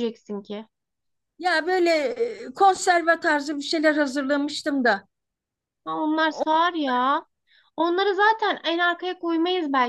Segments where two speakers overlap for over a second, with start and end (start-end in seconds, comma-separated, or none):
none